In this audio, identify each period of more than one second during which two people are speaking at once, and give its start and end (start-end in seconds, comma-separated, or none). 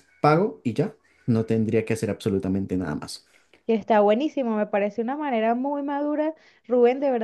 none